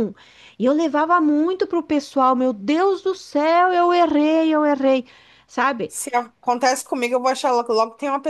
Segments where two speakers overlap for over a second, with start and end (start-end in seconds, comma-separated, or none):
none